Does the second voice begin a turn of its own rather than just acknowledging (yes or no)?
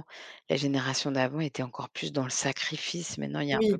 yes